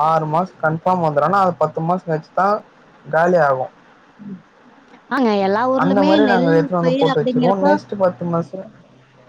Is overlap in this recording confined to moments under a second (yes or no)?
no